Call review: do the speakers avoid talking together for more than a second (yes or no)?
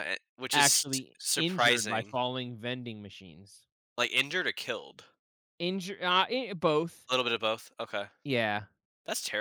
no